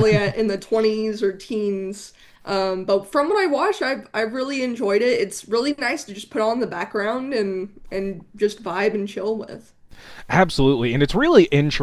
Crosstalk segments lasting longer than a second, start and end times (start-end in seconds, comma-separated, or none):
none